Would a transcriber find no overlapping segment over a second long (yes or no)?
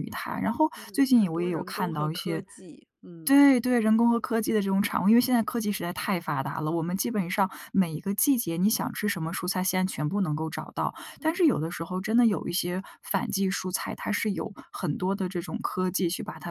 no